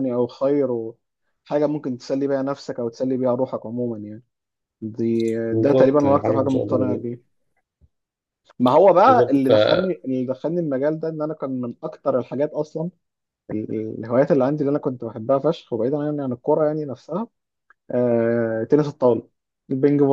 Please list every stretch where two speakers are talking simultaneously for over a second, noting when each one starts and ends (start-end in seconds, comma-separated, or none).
5.5-7.2